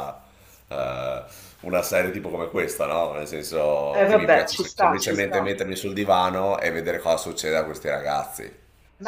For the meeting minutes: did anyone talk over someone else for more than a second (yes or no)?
yes